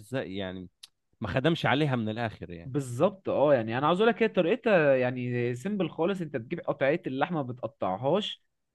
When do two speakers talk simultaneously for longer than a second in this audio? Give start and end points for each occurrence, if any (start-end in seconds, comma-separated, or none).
none